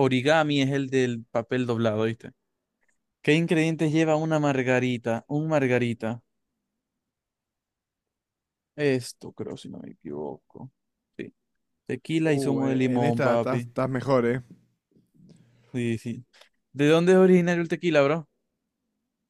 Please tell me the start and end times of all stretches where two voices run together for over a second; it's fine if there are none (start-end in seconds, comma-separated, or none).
12.2-13.7